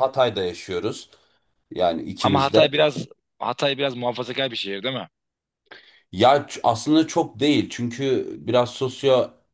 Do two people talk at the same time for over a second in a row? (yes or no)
no